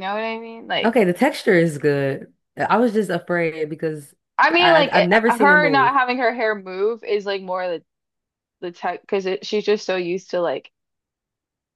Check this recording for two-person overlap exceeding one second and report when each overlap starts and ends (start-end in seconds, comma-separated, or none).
4.6-5.9